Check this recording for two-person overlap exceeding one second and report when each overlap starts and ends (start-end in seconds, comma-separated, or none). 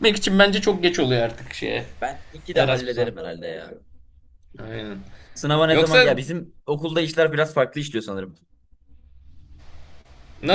none